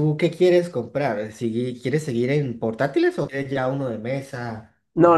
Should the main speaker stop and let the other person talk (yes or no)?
yes